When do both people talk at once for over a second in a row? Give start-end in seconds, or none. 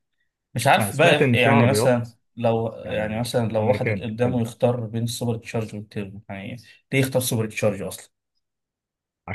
0.8-2.1, 2.8-4.4